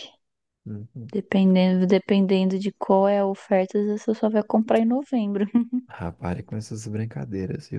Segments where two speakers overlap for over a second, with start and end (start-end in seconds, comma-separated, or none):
none